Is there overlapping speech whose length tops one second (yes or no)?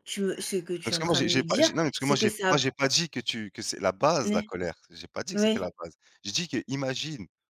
yes